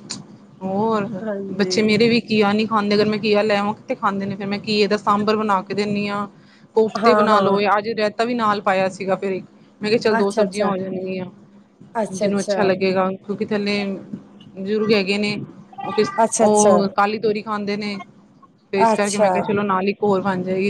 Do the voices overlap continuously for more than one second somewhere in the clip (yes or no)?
no